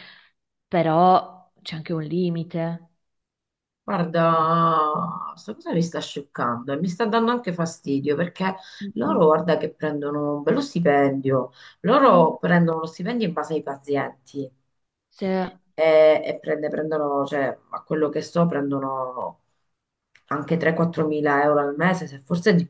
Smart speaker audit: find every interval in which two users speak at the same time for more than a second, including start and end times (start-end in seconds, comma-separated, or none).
none